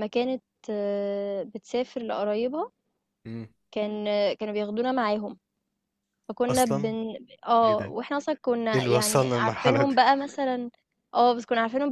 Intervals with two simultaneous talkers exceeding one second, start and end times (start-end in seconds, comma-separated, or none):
8.7-9.9